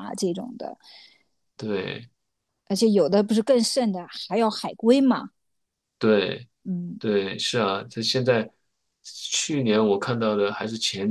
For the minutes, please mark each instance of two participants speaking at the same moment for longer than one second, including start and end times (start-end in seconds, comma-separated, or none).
none